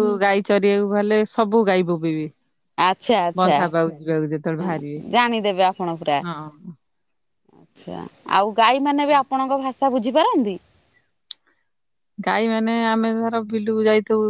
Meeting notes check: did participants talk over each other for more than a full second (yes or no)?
no